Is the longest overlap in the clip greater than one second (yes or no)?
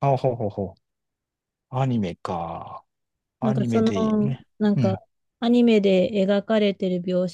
yes